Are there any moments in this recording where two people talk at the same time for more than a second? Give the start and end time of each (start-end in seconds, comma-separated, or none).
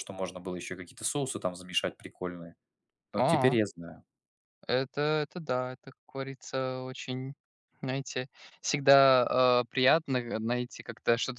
none